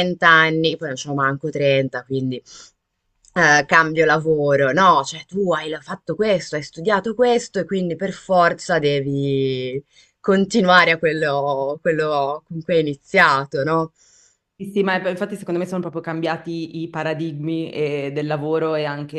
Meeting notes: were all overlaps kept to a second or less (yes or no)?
yes